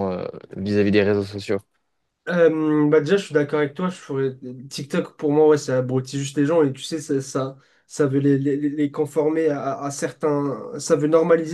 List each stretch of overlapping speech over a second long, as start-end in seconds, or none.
none